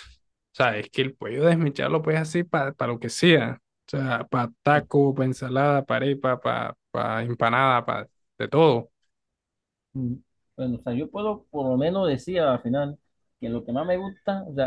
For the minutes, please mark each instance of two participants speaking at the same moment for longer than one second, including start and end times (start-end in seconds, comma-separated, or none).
none